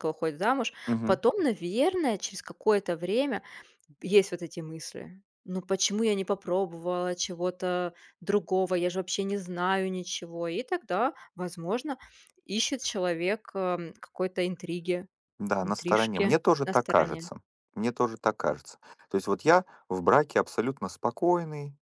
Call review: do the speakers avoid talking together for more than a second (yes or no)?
no